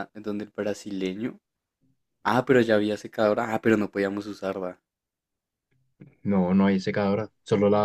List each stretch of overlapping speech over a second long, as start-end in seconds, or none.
none